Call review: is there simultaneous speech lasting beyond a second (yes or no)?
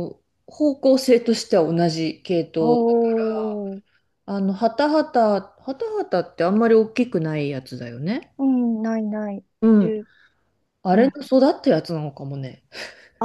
no